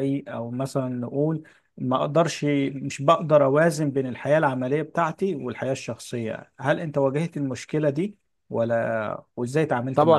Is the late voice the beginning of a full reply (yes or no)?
yes